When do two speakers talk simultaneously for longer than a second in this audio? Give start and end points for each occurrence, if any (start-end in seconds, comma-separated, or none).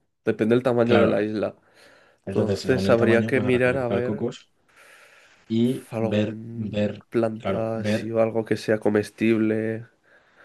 2.2-4.2, 5.9-8.1